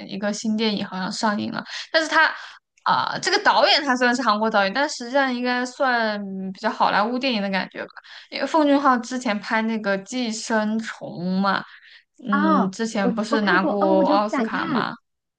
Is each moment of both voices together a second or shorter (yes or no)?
no